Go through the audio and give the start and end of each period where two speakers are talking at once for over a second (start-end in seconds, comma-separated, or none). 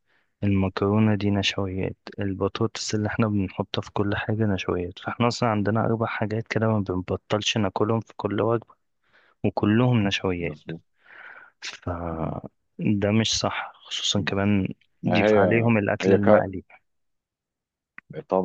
15.1-16.5